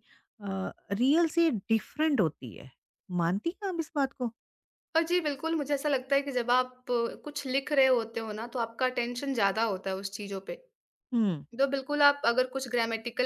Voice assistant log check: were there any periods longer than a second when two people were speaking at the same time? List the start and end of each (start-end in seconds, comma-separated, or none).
none